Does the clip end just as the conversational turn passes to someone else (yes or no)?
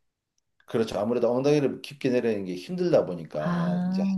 no